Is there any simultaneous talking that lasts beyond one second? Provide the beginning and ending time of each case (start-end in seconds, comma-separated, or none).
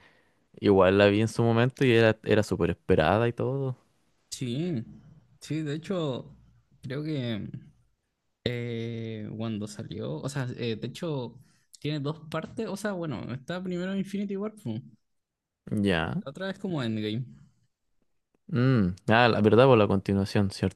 none